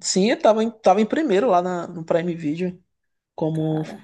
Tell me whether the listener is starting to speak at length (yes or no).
no